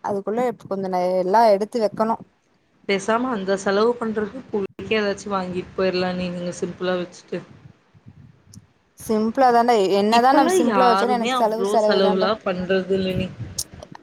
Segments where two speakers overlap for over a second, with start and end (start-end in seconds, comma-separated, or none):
10.2-12.3